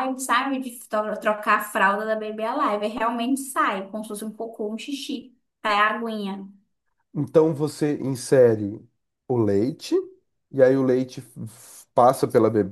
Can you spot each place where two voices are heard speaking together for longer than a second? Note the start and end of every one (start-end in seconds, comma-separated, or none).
none